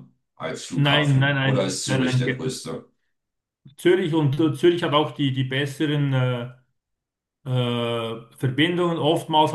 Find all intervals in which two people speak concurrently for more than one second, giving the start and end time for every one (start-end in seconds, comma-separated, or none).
0.7-2.5